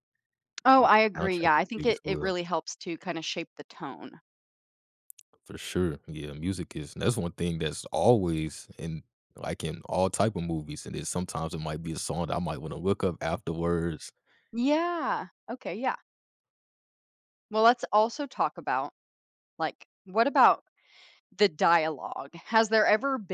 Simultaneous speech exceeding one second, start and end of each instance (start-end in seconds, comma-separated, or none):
0.8-2.4